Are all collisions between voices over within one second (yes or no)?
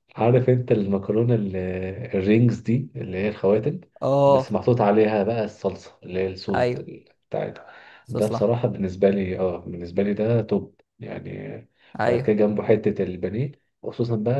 yes